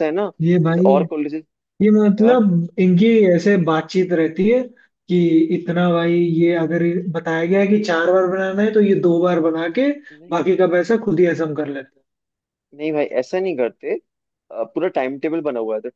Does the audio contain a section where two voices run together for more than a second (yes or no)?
no